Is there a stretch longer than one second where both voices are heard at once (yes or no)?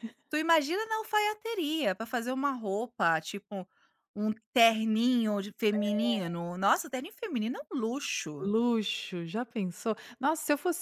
no